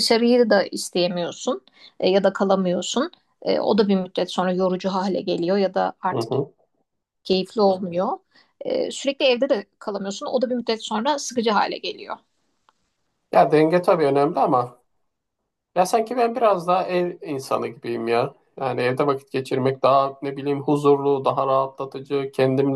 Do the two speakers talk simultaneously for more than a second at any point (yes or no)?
no